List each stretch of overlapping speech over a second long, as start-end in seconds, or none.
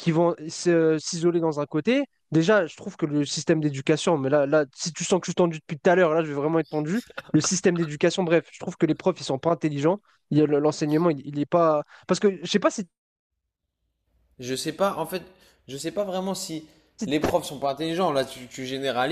none